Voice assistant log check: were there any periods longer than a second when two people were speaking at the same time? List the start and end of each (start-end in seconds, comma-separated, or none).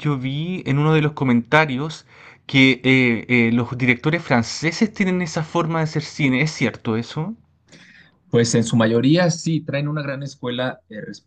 none